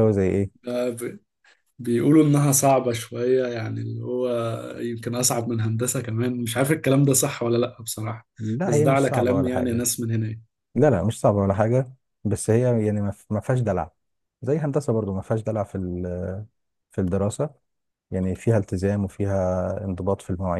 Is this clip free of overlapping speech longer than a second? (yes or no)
no